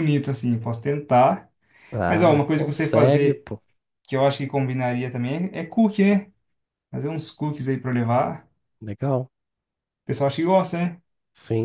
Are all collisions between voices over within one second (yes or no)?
no